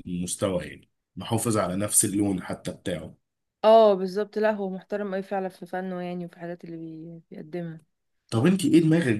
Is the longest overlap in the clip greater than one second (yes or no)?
no